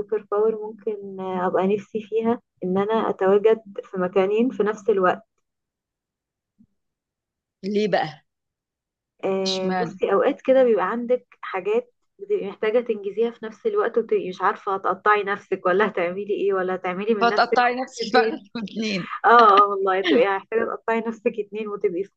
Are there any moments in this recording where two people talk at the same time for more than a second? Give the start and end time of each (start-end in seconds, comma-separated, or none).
17.2-18.4